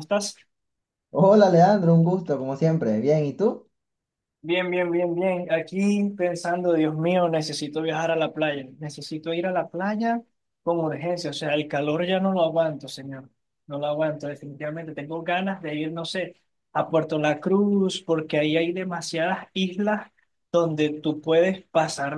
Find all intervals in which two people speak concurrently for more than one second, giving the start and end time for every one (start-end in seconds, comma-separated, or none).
none